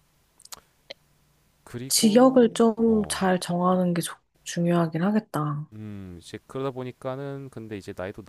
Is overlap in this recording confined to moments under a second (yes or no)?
no